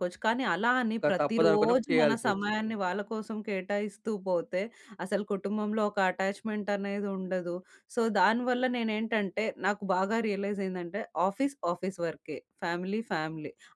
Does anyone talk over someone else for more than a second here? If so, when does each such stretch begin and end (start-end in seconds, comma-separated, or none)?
1.0-2.7